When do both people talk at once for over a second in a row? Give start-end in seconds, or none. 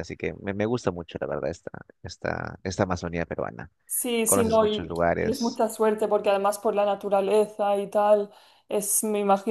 4.2-5.6